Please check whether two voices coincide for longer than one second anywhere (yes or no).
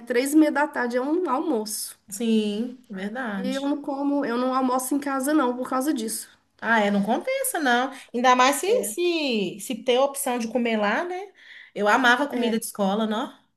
no